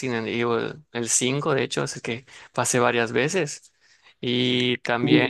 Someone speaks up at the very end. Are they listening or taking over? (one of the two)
listening